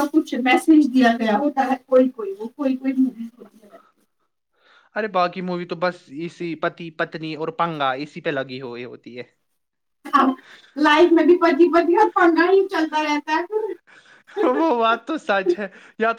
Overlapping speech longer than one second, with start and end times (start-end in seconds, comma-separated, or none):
none